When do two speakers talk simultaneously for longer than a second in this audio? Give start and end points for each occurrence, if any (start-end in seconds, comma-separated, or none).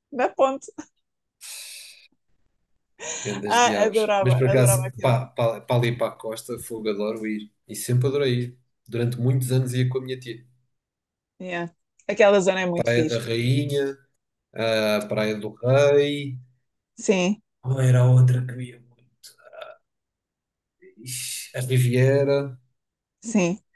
3.5-5.2